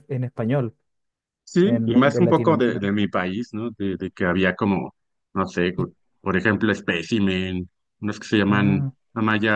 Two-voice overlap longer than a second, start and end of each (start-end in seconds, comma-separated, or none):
1.6-2.9